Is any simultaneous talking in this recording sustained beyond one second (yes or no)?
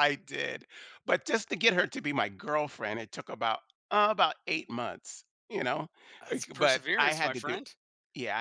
yes